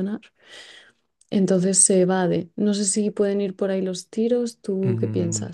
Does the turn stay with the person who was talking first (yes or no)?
no